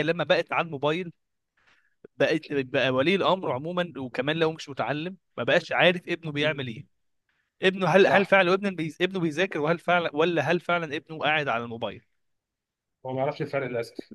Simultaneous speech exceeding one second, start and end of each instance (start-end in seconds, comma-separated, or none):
none